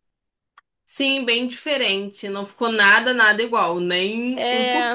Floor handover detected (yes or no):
no